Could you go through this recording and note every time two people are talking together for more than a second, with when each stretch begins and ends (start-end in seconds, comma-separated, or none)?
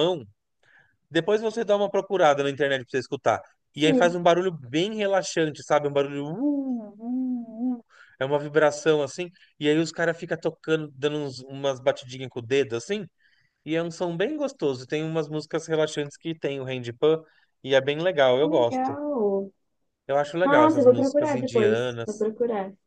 20.4-22.3